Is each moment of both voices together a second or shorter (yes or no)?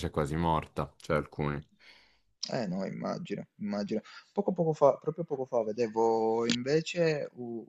yes